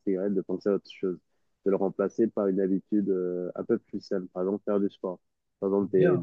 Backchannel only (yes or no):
no